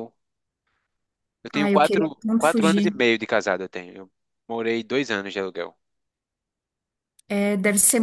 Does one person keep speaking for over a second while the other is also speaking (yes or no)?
yes